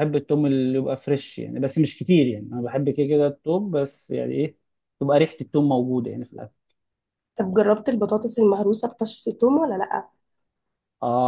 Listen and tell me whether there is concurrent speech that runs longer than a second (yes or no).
no